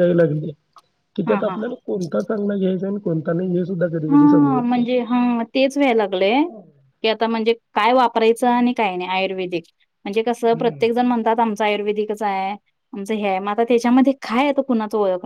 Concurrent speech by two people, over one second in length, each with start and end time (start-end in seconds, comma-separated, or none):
none